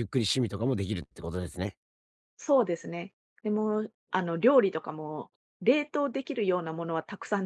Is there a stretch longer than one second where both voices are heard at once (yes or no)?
no